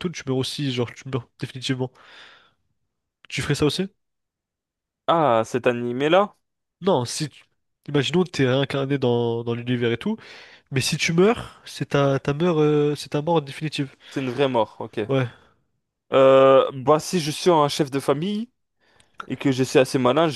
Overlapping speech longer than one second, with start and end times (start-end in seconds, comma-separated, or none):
none